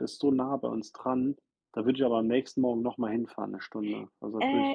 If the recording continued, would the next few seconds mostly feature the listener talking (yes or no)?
yes